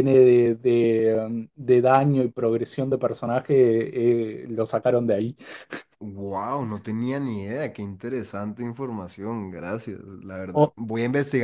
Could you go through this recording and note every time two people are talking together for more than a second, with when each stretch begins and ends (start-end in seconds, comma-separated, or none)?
none